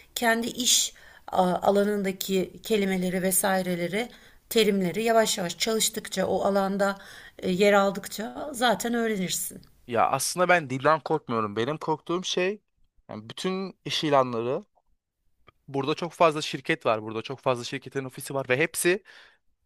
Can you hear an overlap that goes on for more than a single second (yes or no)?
no